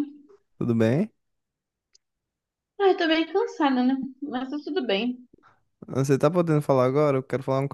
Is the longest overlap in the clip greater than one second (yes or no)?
no